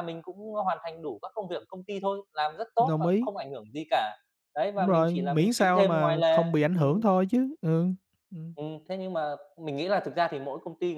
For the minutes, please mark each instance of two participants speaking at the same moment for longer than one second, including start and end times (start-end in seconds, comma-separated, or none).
4.8-7.0